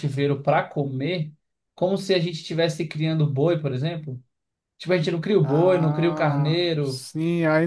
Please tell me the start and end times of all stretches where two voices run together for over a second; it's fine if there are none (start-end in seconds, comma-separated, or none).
5.4-7.1